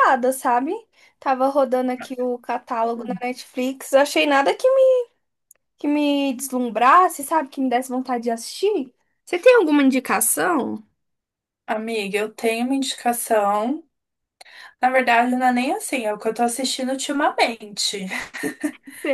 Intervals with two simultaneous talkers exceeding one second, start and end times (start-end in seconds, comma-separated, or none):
none